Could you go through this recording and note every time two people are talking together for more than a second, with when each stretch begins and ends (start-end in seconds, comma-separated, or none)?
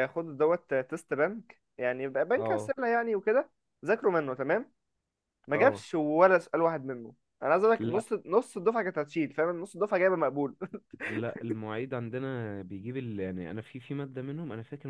none